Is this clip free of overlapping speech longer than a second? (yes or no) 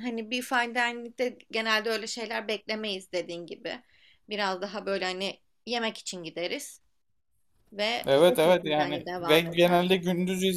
no